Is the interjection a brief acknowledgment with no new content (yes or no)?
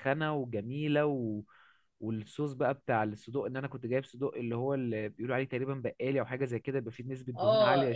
no